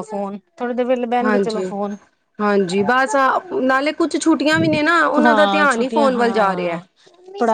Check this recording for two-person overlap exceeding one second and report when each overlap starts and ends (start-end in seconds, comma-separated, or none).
5.2-6.8